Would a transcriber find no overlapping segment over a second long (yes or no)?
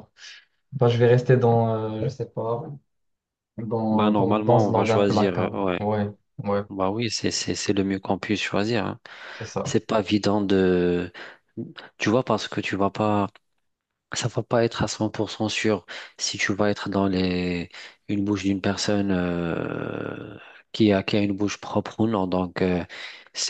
no